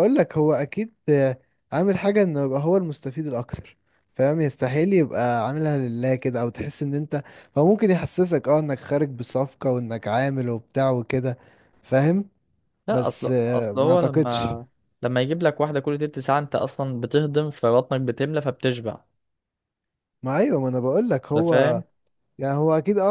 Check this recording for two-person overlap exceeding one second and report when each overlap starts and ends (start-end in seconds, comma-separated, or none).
12.9-14.5